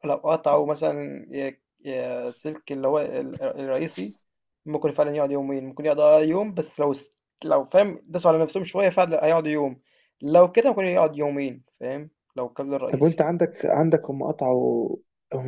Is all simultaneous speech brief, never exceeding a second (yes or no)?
yes